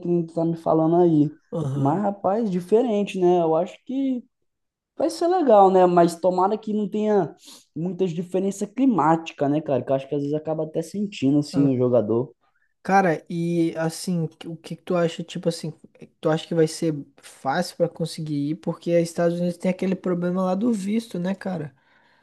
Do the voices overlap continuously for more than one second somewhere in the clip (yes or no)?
no